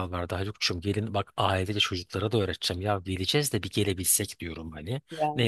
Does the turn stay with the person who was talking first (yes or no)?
yes